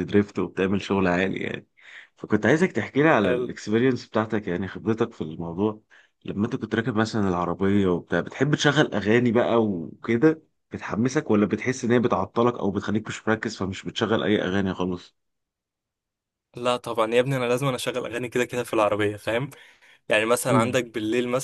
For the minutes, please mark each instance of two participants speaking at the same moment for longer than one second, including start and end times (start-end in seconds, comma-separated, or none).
none